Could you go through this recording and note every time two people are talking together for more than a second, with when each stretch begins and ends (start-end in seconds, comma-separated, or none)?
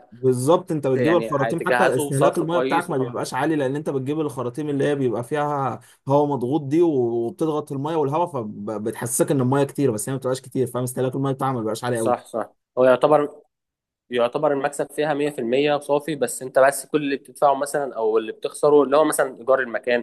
0.9-2.9